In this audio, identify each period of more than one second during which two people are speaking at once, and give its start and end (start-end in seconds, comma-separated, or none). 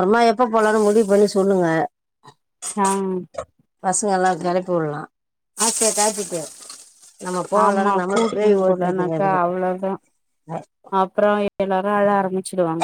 7.7-9.4